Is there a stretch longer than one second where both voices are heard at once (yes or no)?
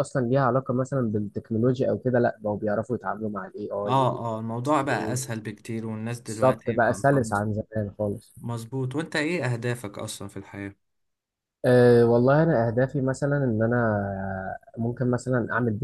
yes